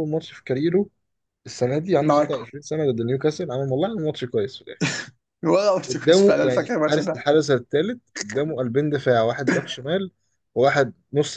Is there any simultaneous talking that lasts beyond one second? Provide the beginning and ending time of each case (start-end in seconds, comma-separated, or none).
5.9-7.2